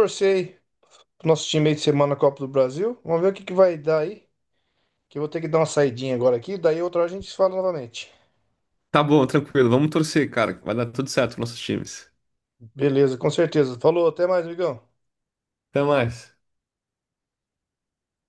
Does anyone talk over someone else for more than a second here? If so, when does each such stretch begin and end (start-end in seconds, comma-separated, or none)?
none